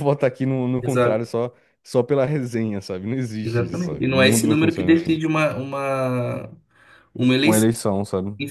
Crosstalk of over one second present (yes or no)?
yes